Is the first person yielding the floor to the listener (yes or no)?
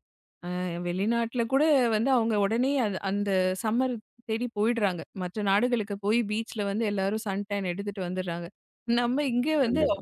no